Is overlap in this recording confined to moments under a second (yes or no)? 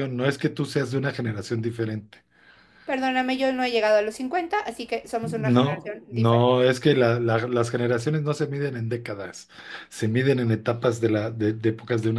no